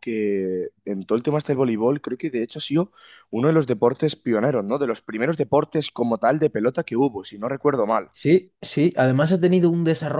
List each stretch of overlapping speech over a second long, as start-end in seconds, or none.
none